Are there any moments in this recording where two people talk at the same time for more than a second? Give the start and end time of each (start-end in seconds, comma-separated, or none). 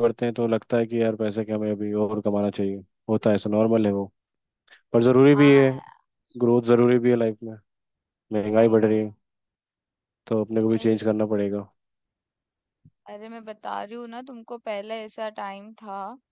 none